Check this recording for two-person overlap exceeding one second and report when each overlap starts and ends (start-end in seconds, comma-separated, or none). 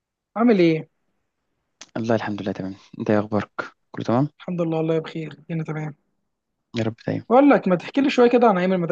none